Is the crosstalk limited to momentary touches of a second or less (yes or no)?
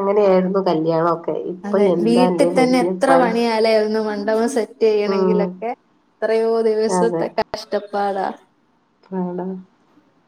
yes